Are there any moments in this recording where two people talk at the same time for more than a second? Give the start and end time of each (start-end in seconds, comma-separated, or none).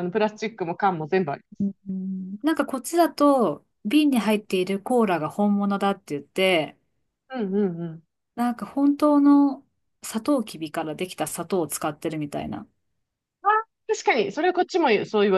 none